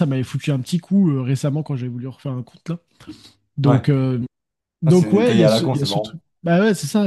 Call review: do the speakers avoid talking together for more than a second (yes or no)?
no